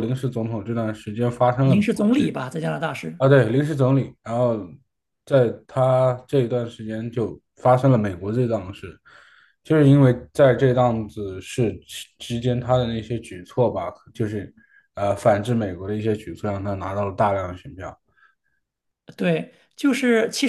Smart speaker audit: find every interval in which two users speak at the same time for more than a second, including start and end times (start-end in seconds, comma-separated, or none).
none